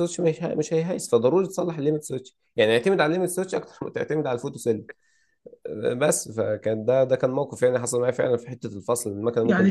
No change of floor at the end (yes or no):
no